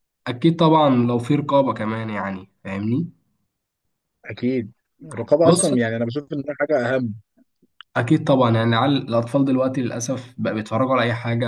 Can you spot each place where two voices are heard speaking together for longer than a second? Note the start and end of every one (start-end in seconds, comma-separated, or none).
none